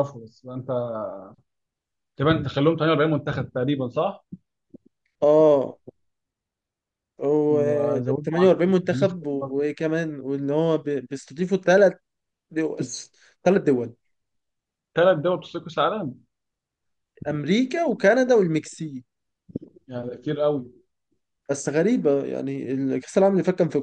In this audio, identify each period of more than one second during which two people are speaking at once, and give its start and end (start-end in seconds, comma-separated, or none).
8.2-9.5